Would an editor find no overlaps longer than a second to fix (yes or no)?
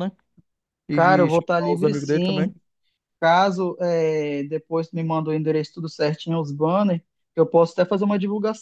no